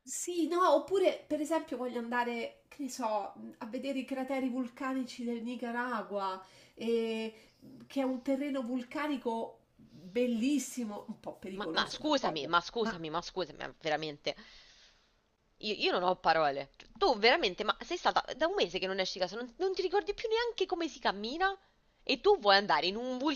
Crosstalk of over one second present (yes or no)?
yes